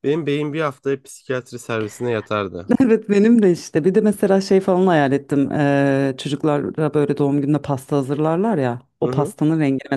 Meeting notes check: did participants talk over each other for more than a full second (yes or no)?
no